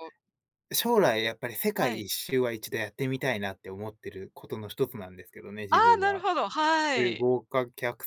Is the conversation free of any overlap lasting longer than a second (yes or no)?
yes